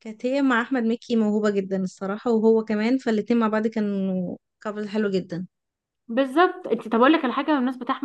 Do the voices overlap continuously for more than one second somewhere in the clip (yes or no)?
no